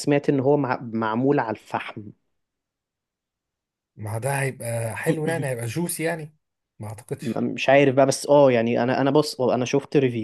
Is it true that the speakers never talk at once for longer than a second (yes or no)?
yes